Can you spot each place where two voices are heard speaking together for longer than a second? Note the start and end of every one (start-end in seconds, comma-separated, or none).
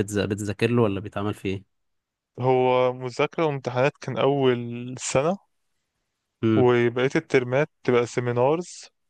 none